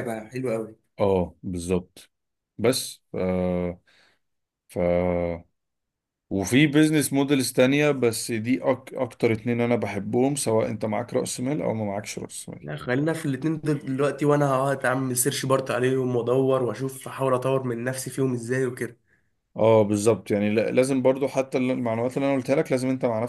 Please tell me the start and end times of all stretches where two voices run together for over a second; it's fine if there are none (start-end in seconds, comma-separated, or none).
none